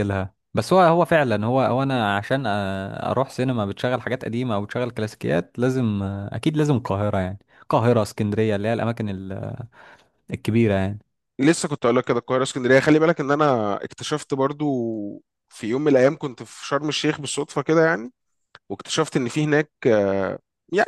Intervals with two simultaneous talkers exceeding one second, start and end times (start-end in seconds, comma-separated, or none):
none